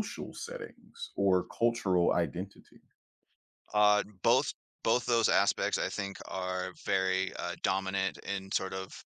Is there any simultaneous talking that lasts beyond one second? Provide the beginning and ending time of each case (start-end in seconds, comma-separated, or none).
none